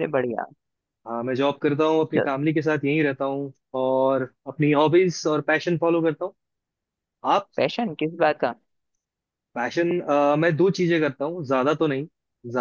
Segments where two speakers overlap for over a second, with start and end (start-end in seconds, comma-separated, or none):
none